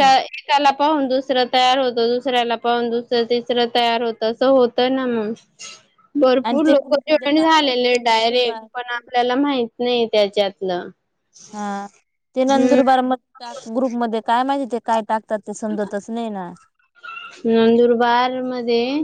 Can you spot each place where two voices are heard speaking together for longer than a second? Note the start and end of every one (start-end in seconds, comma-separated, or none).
6.5-8.7